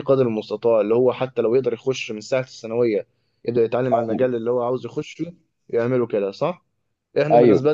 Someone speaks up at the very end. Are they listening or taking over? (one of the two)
listening